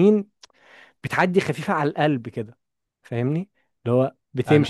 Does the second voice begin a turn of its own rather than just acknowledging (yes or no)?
yes